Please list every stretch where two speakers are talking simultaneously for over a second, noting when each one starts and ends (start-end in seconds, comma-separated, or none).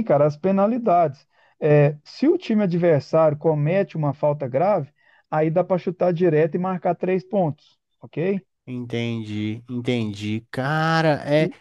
none